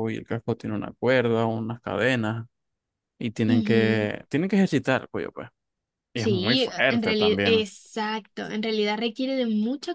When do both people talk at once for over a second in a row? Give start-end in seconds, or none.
6.2-7.6